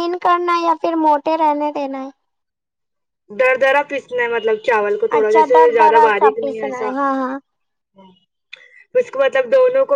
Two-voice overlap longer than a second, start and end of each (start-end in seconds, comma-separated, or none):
5.0-6.9